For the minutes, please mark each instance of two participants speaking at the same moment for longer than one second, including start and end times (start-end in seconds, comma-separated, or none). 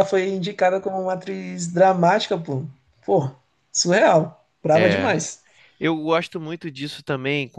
none